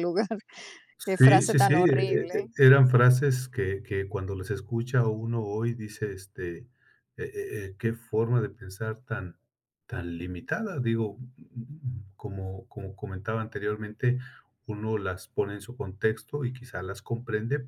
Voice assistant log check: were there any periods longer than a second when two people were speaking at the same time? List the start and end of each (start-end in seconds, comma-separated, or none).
1.2-2.5